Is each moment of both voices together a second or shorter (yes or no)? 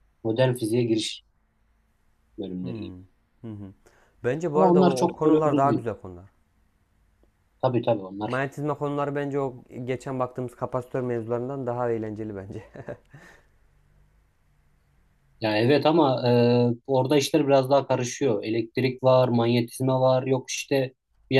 no